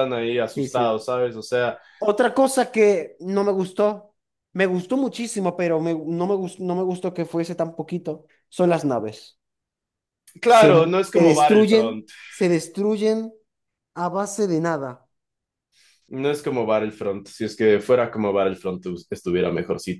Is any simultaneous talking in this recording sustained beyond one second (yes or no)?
yes